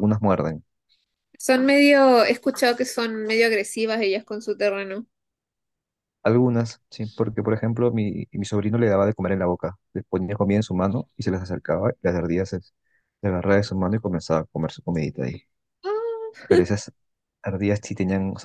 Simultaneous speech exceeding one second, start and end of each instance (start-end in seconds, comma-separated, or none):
none